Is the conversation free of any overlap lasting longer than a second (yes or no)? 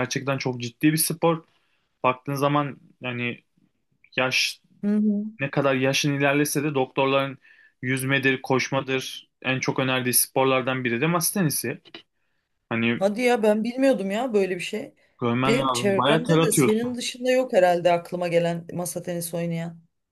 no